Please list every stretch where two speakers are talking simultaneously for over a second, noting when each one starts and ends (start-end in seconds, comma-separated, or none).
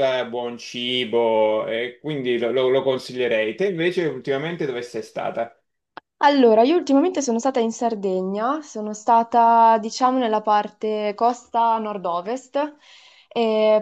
none